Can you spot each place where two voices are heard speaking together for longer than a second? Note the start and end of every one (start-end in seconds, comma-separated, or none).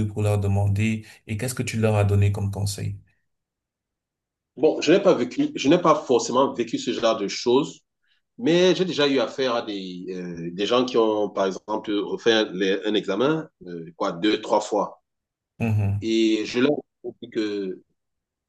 none